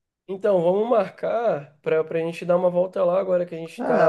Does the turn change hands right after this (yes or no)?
yes